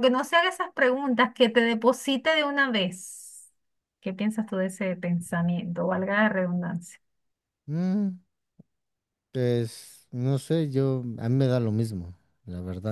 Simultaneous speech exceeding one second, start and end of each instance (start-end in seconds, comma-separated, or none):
none